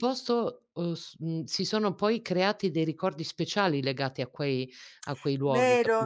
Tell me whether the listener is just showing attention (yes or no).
no